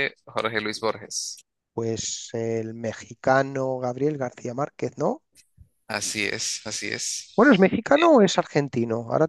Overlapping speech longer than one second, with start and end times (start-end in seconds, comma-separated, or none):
none